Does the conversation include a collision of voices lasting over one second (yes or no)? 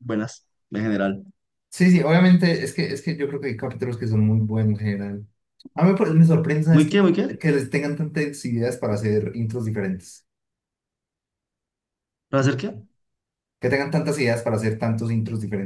no